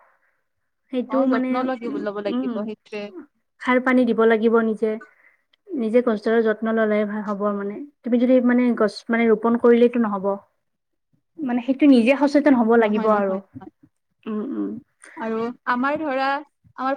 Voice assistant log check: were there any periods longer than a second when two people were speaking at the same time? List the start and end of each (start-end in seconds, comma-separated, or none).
none